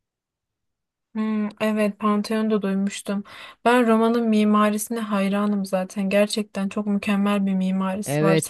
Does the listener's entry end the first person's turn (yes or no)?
yes